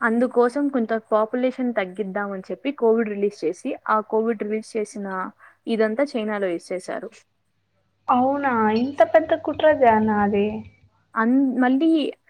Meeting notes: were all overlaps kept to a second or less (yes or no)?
yes